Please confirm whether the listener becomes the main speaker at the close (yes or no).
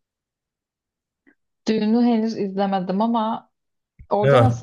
yes